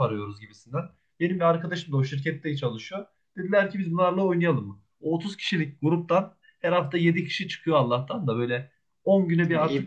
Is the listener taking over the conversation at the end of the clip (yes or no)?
no